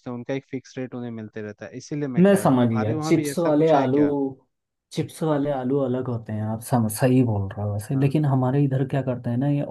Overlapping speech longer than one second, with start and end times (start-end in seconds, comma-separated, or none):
2.2-4.0